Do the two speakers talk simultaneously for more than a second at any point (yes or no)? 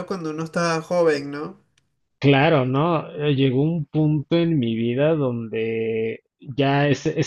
no